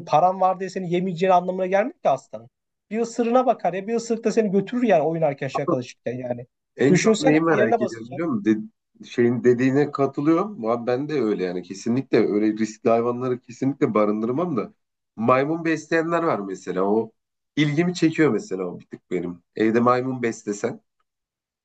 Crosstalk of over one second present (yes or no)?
yes